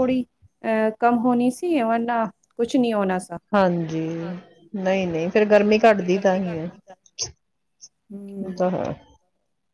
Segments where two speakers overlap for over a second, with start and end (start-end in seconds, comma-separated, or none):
none